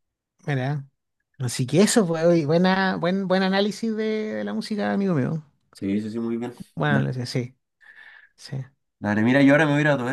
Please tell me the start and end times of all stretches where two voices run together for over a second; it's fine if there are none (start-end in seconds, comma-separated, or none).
none